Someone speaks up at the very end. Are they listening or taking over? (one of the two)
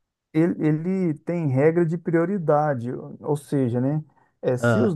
listening